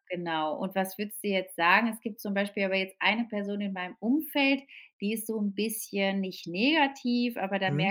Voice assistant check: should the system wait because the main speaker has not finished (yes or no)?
yes